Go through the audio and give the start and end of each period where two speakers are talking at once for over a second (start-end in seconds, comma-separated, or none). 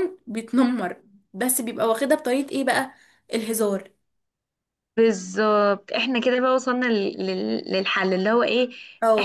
none